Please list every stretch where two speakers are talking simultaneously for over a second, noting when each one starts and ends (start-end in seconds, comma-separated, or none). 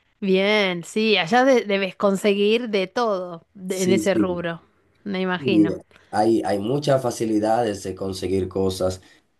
none